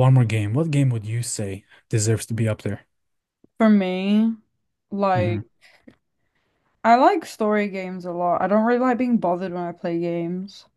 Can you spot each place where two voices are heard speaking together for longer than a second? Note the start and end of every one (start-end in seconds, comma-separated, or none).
none